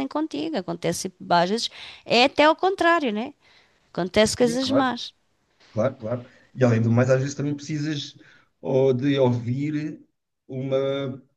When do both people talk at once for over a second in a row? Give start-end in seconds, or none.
none